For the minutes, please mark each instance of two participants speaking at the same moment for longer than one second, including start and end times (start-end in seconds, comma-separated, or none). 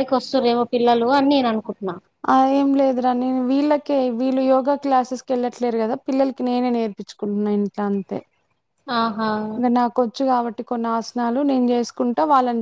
none